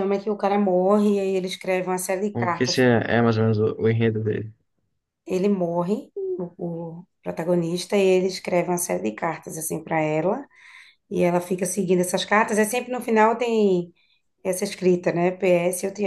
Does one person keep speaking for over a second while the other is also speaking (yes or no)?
no